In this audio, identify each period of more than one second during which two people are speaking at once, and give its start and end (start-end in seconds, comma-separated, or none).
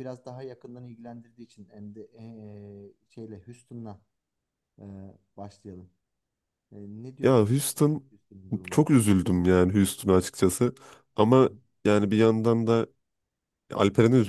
none